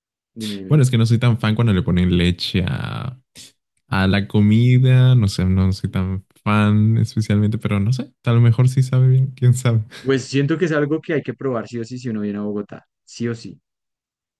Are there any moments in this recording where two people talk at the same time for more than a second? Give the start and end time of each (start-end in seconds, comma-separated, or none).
none